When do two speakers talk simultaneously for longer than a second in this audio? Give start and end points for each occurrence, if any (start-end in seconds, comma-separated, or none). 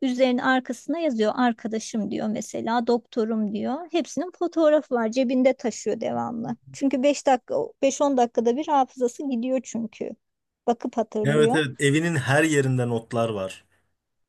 none